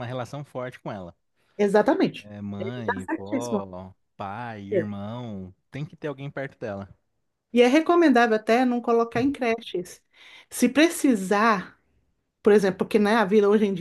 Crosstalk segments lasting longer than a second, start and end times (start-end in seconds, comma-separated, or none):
2.2-3.6